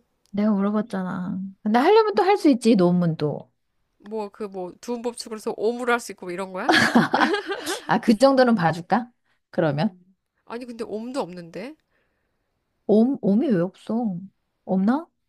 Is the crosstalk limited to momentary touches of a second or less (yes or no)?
yes